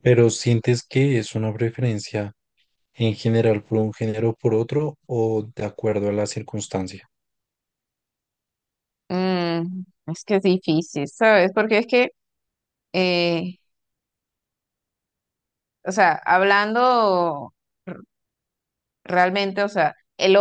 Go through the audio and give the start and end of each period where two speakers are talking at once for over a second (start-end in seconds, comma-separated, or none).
none